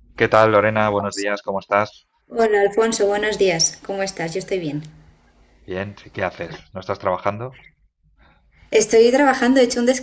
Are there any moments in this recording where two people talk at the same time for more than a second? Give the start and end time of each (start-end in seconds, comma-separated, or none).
none